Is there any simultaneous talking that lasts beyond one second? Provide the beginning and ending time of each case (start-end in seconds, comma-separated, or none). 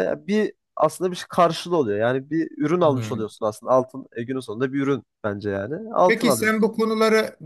none